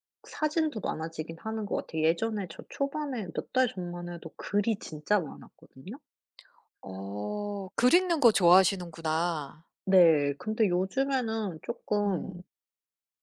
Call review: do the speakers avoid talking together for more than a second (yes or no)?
yes